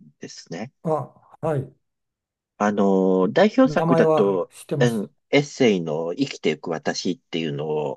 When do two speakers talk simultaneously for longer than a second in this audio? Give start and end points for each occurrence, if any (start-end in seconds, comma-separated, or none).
3.6-5.1